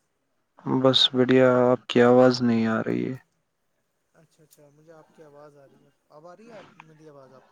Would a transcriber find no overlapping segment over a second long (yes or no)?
yes